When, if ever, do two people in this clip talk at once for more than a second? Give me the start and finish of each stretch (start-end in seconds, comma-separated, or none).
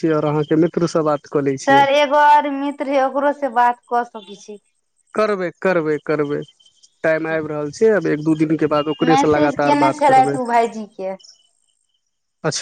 9.0-10.4